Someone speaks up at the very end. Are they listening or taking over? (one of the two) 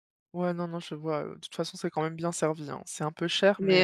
taking over